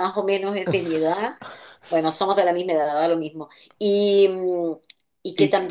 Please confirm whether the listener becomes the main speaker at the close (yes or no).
no